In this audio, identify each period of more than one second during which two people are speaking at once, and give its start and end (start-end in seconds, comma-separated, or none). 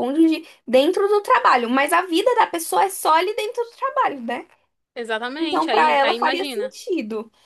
5.4-6.8